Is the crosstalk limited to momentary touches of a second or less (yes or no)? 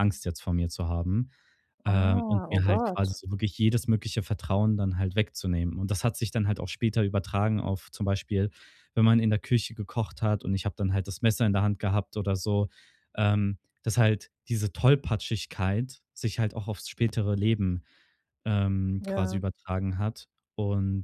no